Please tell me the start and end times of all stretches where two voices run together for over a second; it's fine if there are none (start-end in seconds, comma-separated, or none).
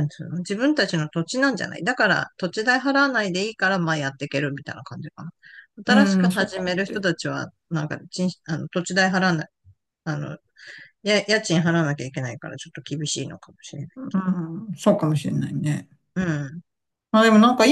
5.9-7.2